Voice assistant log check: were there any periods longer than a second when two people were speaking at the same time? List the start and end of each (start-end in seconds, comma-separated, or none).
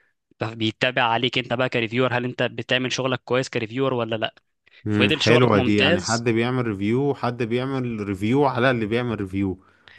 4.9-6.3